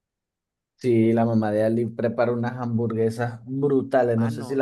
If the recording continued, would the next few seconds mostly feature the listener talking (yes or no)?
yes